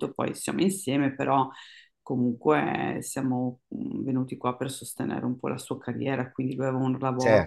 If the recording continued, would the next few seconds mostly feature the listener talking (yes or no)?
no